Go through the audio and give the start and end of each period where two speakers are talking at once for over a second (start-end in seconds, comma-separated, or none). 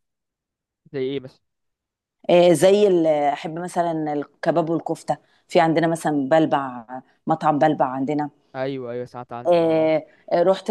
none